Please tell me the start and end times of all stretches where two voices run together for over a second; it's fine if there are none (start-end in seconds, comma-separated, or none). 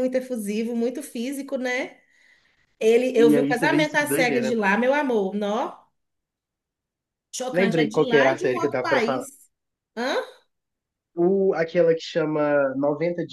3.2-4.6, 7.5-9.2